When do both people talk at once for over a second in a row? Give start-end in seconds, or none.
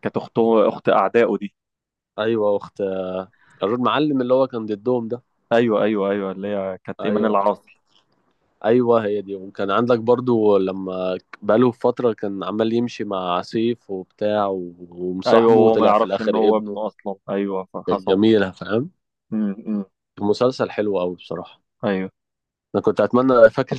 15.3-16.8